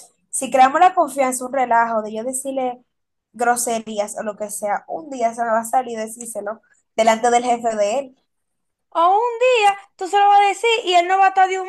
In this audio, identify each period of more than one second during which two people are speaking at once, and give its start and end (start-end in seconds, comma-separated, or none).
none